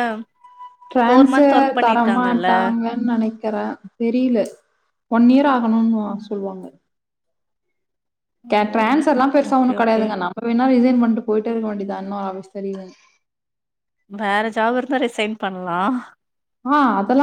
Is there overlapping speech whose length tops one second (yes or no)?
yes